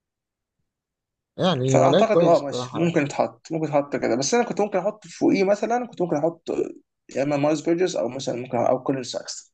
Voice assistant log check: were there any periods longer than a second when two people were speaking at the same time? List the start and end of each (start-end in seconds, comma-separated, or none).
1.7-3.0